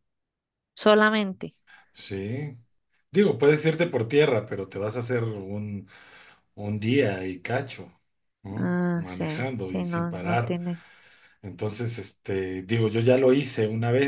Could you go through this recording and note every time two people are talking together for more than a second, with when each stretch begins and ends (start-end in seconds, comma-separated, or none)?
8.6-10.5